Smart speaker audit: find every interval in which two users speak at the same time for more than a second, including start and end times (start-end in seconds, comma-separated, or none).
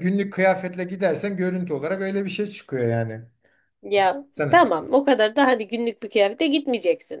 none